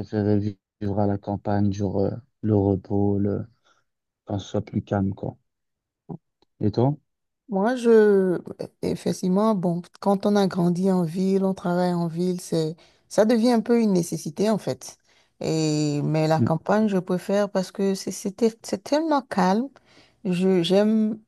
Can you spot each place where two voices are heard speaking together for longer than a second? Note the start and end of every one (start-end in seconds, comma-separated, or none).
none